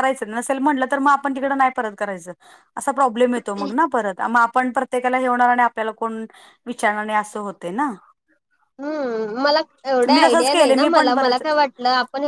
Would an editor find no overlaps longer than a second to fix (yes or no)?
no